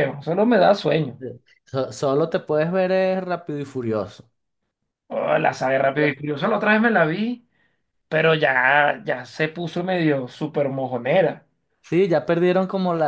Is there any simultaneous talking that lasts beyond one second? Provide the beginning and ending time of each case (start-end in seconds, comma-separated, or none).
none